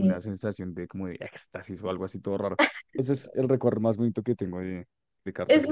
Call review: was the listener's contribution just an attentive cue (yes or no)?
no